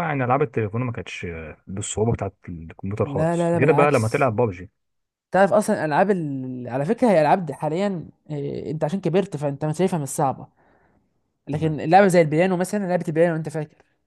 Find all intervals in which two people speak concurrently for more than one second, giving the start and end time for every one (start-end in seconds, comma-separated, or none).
3.0-4.3